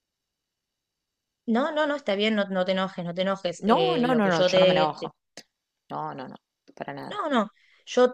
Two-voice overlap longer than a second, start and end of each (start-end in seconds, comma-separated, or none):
3.7-5.1